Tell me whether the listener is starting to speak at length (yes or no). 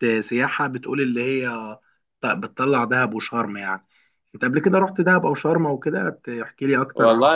yes